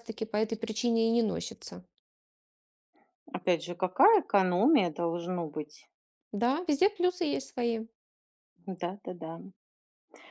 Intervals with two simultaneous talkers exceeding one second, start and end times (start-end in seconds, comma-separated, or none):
none